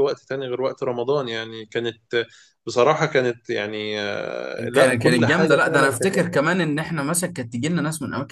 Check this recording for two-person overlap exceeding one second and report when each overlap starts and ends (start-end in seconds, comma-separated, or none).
4.6-6.0